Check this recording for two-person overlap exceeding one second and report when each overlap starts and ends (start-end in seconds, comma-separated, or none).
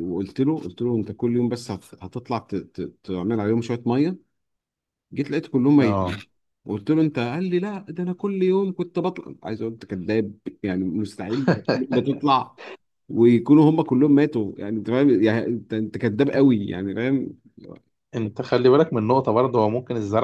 none